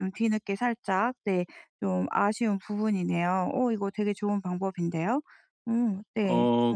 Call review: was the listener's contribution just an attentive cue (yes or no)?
no